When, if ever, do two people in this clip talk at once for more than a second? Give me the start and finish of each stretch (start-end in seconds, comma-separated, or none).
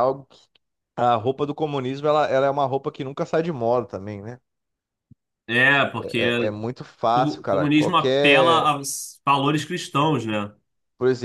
7.1-8.7